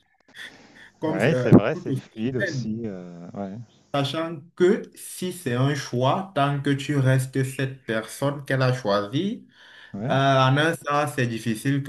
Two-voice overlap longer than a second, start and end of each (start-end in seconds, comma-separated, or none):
1.1-2.7